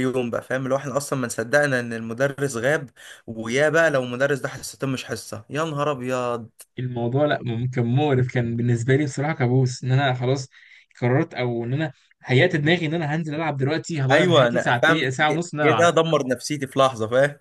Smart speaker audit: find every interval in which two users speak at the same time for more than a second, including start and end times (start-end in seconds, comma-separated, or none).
14.1-15.9